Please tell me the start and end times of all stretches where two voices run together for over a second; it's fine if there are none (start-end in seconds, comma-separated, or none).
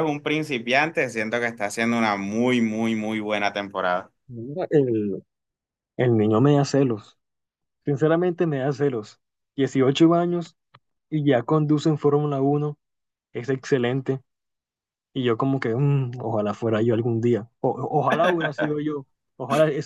none